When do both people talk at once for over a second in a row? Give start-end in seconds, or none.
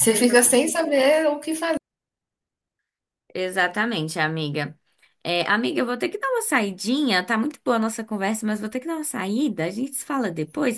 none